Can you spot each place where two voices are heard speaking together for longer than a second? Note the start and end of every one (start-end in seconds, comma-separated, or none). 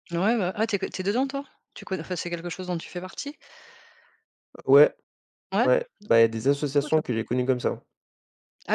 none